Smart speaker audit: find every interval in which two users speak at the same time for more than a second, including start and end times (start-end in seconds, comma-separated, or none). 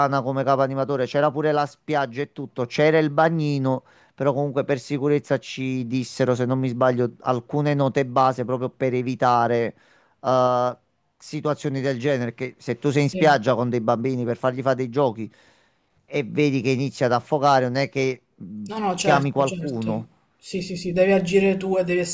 18.7-20.1